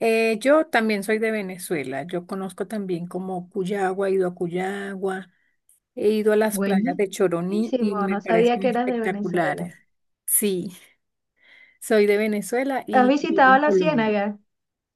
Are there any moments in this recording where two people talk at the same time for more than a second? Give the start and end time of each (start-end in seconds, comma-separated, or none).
8.1-9.7, 12.9-14.2